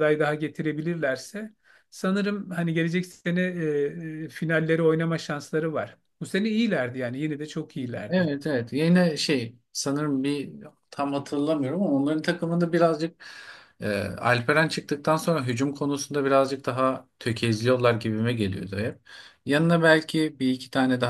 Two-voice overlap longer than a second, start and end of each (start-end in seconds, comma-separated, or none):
none